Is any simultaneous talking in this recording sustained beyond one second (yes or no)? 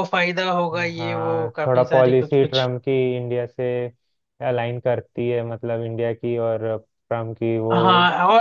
yes